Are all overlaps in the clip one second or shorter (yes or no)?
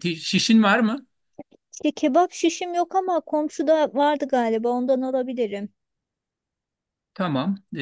yes